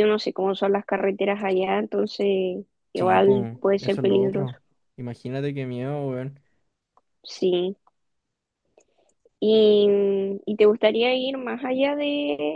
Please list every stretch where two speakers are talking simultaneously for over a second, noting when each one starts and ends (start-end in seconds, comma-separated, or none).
2.9-4.5